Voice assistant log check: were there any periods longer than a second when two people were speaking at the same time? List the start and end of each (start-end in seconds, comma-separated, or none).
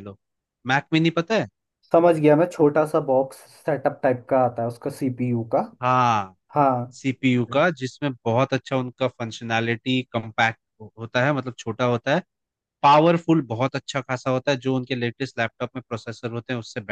none